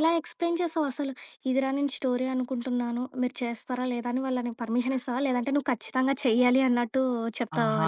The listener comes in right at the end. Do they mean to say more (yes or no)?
yes